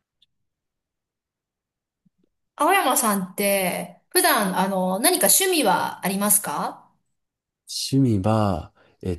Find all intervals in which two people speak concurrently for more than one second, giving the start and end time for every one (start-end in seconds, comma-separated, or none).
none